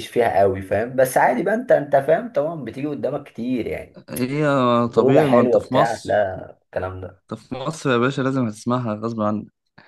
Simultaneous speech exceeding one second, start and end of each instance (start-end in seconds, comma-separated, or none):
5.0-6.3